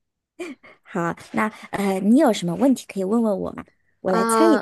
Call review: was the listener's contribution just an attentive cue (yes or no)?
no